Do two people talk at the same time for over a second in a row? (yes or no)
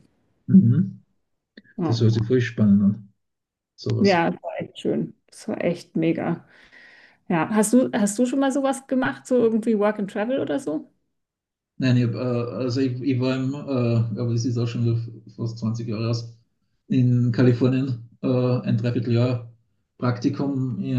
no